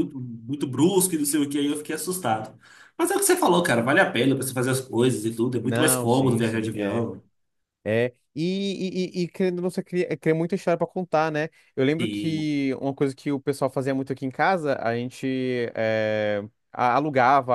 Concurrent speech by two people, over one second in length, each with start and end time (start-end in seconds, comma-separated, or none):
5.6-7.1